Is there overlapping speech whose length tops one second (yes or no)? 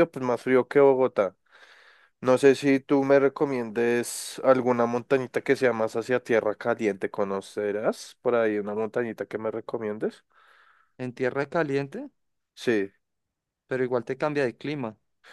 no